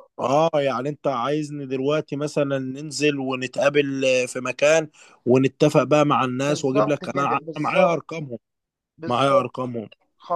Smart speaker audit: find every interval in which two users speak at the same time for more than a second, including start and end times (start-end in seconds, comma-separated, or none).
6.5-8.0